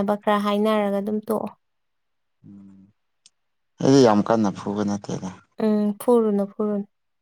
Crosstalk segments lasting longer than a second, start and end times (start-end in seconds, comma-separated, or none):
none